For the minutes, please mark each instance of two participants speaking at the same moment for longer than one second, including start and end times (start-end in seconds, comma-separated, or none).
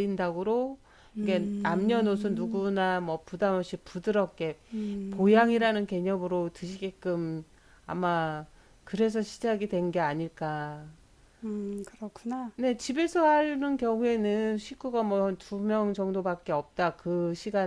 1.2-2.6